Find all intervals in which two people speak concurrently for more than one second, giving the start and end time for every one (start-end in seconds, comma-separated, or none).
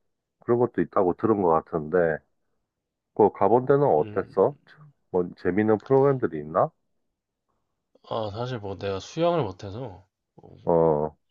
none